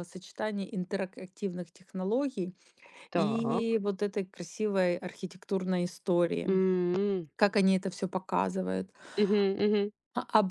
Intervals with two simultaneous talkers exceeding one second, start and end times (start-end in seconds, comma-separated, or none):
none